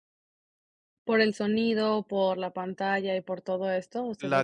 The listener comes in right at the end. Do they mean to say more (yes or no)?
yes